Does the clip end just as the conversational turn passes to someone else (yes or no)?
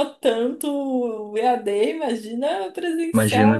yes